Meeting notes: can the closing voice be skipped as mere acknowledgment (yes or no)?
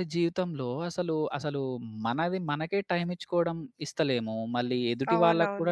yes